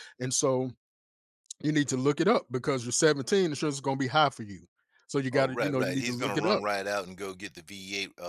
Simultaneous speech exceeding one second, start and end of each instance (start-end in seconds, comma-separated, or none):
5.3-6.6